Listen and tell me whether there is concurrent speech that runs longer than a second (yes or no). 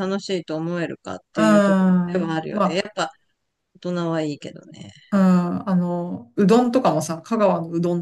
yes